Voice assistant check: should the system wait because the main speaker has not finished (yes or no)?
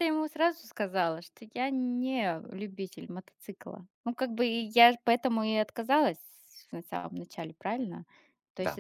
yes